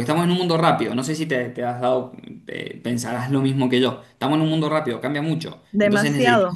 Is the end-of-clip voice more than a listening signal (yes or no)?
yes